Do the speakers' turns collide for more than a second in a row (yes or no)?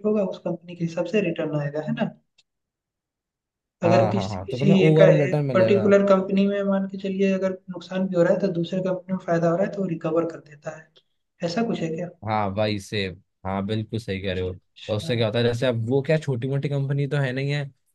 yes